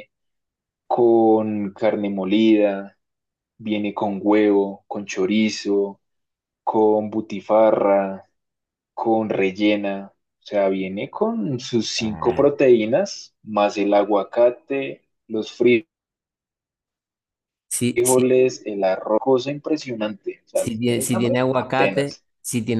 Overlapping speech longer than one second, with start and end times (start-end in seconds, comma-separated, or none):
20.5-22.2